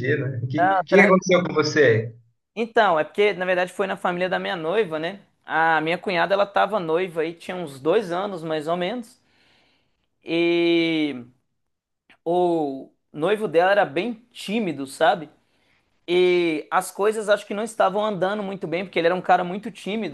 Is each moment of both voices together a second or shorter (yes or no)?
yes